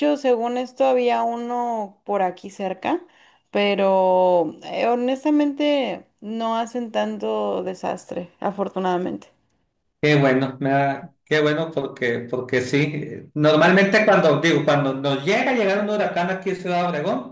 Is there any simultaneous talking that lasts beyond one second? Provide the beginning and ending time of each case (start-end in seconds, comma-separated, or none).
none